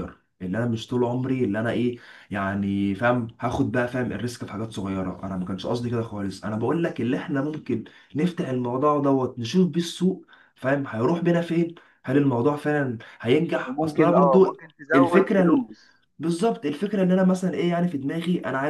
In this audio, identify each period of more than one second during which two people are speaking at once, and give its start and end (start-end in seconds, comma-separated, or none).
13.6-15.6